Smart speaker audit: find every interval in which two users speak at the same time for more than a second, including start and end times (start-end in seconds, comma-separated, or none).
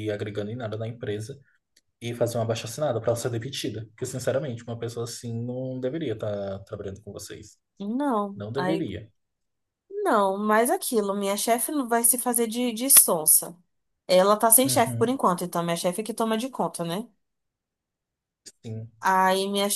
none